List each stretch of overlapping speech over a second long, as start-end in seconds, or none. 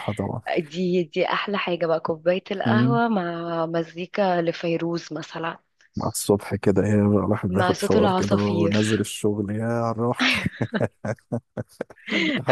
7.5-9.0